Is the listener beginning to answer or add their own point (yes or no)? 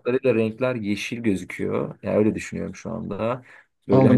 yes